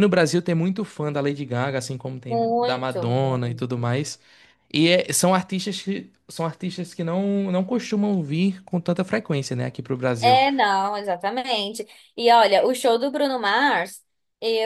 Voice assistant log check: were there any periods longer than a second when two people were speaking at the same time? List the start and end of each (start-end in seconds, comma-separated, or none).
2.3-3.8